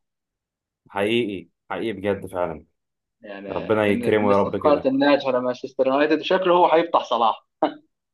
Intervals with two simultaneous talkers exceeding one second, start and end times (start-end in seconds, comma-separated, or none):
3.5-4.9